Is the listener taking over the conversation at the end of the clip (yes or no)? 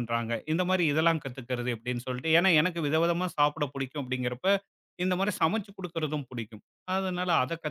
no